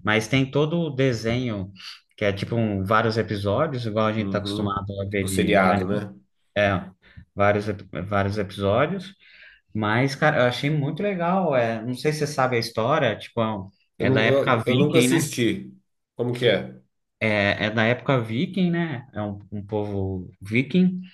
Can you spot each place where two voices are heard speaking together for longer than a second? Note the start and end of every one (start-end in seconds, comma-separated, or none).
4.2-6.0, 14.0-15.3